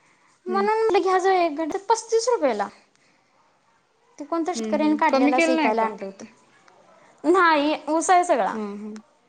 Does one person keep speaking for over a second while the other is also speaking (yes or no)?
yes